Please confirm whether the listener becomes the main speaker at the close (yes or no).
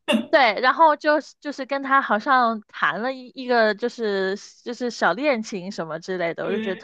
no